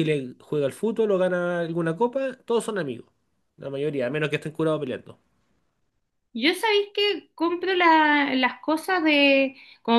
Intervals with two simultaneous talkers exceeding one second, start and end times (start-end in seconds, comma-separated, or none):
none